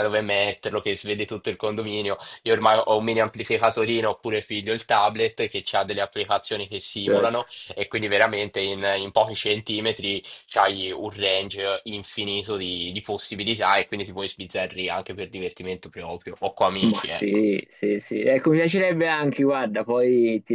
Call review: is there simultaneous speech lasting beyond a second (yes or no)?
no